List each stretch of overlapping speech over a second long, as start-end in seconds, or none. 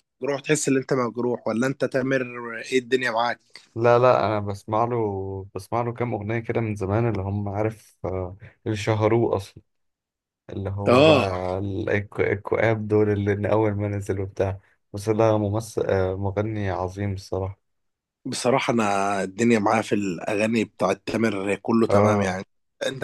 none